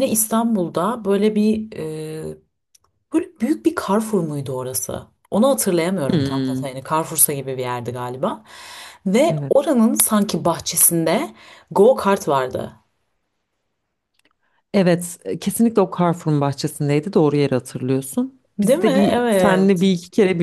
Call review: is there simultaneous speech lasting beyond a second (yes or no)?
yes